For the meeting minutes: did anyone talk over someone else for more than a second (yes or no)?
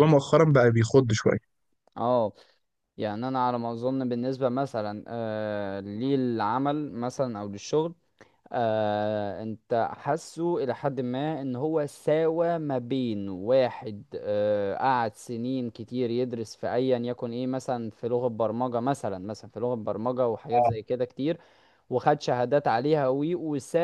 no